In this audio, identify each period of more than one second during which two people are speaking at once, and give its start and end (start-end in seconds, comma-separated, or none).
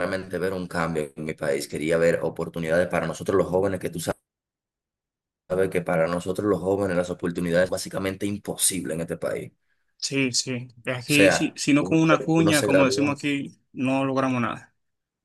10.8-13.2